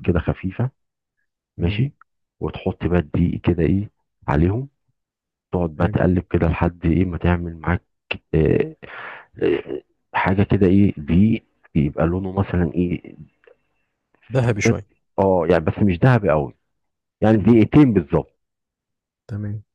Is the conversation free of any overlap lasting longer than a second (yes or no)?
yes